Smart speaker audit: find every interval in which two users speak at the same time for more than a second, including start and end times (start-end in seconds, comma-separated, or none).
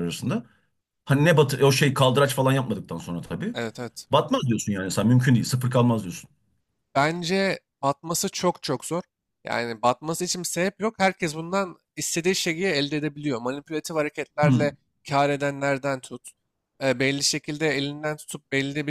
none